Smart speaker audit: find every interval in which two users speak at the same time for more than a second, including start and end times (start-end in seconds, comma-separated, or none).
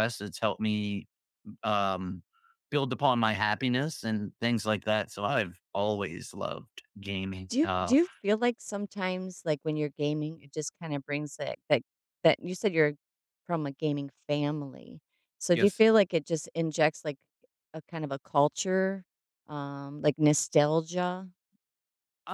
none